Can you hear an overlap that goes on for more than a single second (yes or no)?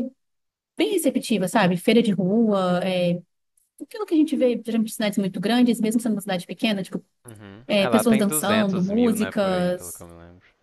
yes